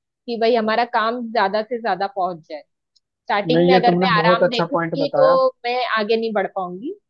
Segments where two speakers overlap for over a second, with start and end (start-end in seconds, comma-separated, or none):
3.5-5.4